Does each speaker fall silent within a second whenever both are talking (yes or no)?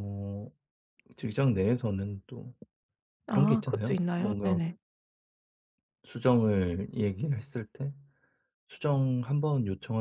no